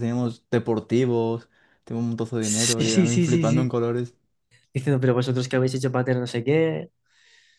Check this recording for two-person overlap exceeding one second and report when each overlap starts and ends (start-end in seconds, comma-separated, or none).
2.4-3.7